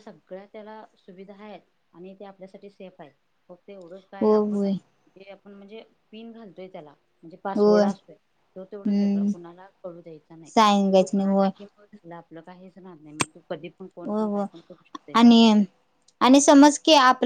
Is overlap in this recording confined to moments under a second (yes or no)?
yes